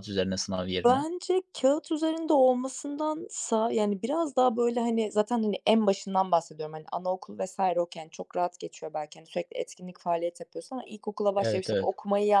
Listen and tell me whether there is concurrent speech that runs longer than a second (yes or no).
no